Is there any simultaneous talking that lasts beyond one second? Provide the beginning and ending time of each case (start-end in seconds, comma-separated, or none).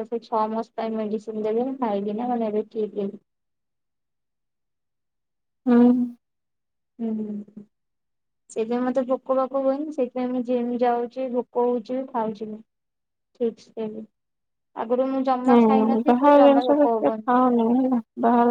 15.5-17.3